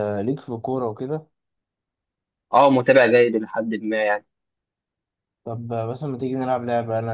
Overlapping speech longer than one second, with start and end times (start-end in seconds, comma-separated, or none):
none